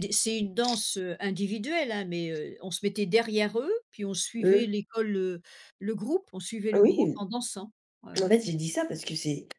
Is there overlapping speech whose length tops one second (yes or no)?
no